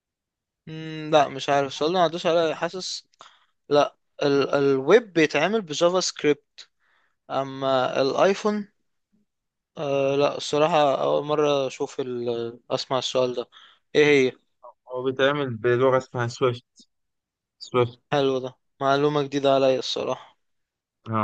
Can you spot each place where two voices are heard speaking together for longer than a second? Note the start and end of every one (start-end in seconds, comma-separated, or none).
none